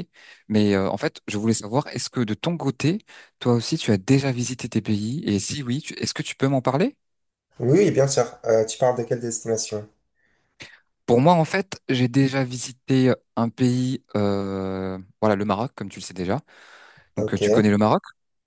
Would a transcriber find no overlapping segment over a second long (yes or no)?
yes